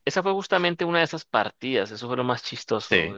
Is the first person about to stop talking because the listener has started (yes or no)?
no